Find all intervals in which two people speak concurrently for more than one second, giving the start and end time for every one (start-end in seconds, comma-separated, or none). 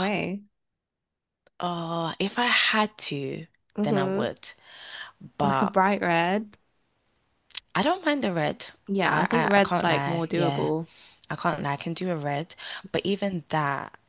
9.0-10.7